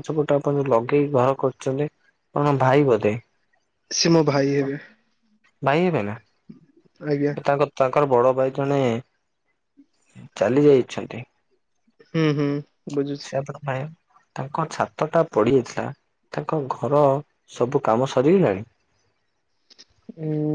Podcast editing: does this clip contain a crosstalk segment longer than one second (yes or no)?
no